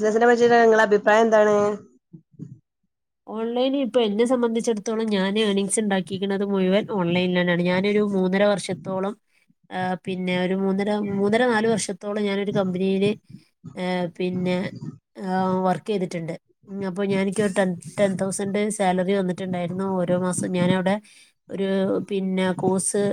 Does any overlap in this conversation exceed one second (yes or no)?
no